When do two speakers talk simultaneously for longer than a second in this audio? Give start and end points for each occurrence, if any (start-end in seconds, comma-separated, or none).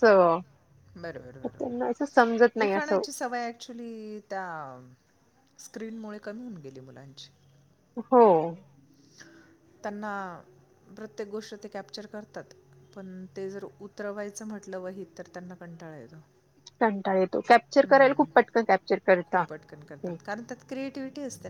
1.4-3.0